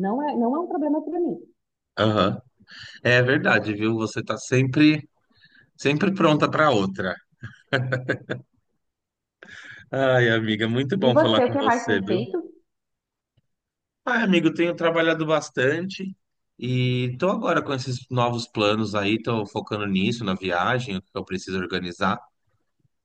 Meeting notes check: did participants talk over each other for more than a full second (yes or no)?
yes